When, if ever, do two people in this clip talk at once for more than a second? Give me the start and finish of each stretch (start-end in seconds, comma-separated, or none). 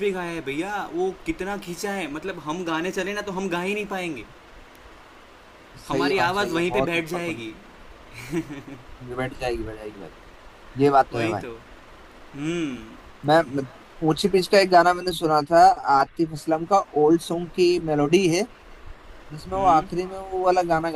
5.9-7.5